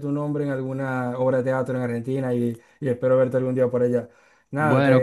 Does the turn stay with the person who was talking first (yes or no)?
no